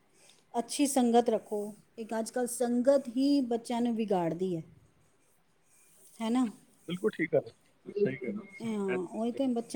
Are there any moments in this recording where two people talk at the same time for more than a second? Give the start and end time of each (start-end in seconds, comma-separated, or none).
none